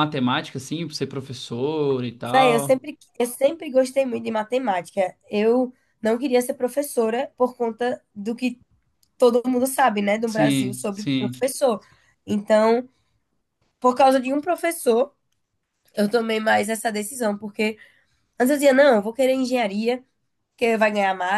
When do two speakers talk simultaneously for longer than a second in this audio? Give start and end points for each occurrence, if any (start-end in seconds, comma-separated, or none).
10.2-11.5